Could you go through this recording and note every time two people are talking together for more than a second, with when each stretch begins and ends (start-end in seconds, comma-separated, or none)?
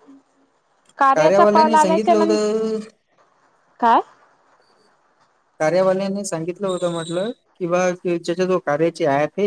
1.1-2.5